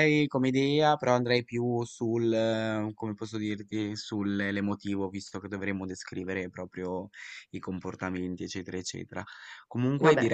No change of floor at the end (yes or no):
yes